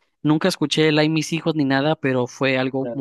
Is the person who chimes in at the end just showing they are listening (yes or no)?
no